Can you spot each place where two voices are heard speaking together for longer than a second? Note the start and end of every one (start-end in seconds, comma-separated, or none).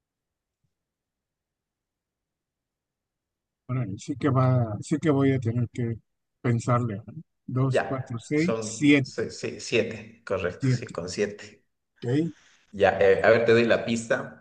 7.7-9.3